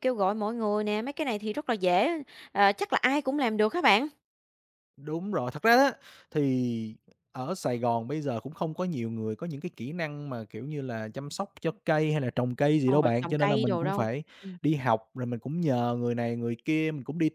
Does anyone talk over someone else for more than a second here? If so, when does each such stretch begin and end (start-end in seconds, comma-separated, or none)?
12.8-14.2